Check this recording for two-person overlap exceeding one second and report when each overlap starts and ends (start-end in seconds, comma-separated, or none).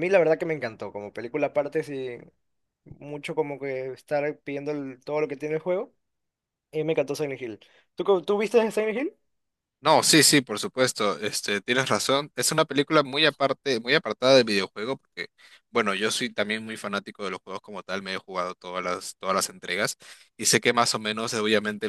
none